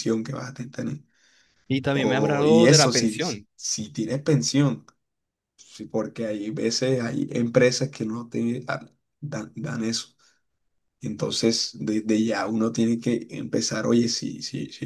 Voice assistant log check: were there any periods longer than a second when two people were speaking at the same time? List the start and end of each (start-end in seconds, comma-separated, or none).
1.9-3.2